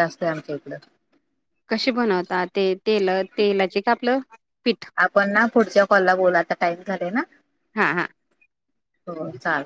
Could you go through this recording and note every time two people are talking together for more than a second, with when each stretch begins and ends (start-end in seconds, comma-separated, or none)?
none